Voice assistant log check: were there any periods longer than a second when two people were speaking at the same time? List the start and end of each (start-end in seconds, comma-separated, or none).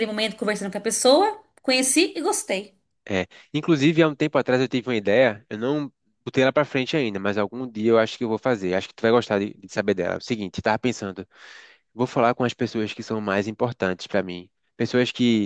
none